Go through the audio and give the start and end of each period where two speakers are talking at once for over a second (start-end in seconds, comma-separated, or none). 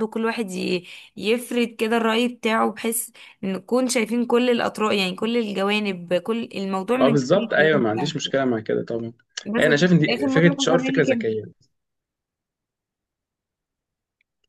7.0-8.3, 9.6-11.3